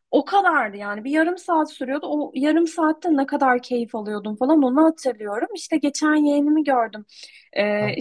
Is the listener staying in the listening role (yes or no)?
yes